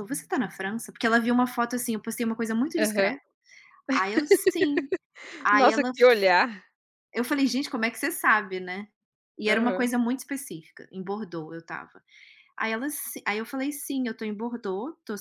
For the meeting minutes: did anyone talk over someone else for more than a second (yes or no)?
no